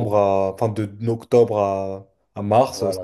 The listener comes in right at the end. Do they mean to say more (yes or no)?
yes